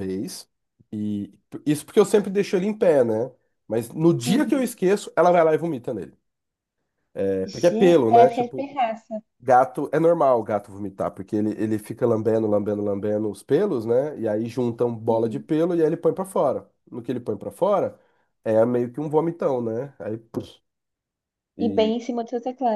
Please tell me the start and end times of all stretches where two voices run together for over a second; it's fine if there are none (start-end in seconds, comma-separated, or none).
7.4-8.7